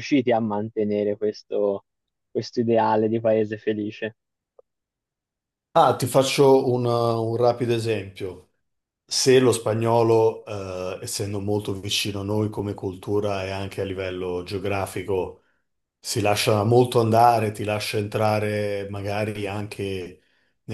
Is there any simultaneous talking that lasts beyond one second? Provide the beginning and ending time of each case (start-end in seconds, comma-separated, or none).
none